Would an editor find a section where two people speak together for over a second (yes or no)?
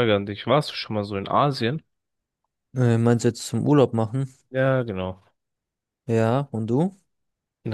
no